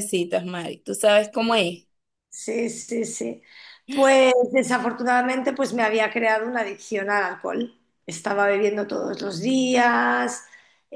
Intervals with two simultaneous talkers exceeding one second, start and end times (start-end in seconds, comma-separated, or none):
none